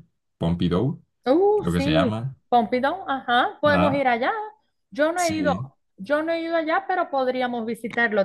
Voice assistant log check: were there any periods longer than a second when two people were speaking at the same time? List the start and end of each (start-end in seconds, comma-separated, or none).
none